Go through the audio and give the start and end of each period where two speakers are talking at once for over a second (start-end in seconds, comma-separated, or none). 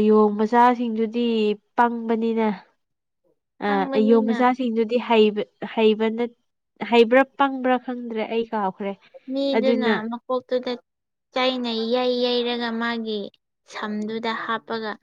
none